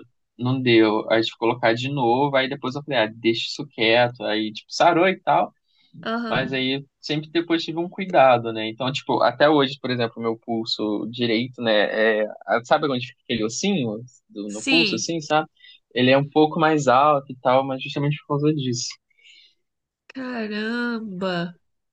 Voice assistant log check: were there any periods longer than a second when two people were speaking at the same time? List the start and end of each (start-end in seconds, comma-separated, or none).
none